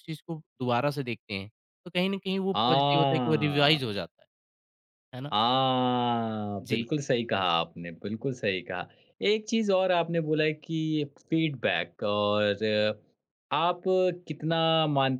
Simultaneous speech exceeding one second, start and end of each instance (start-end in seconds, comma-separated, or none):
2.5-4.0